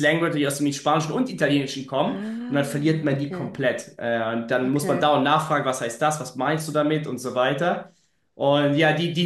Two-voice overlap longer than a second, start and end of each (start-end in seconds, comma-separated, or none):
2.0-3.6